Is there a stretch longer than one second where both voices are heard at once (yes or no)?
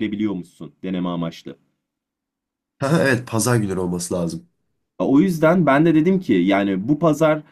no